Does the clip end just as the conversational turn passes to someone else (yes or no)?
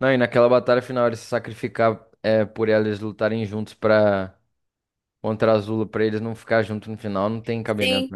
yes